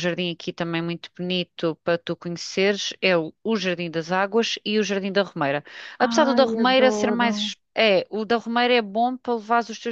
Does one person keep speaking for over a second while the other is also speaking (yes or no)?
yes